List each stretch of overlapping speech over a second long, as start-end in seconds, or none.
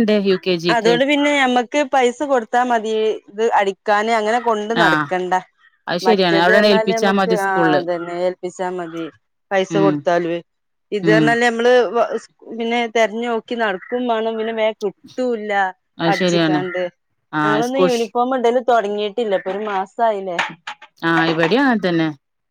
6.1-7.8